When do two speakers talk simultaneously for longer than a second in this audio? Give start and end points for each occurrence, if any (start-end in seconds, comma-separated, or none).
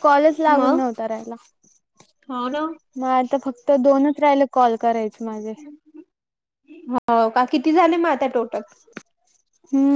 none